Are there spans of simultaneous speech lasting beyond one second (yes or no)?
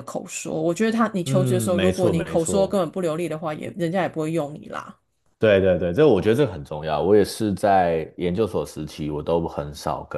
yes